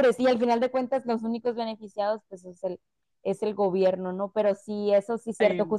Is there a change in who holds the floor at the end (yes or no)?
no